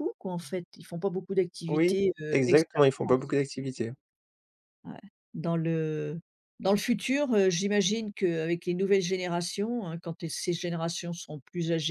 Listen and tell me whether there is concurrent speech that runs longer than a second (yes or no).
yes